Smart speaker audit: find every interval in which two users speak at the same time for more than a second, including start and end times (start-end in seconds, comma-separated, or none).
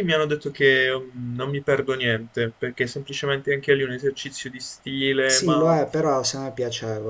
none